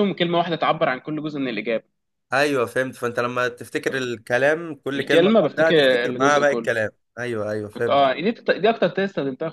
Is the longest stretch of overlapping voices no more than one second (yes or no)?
no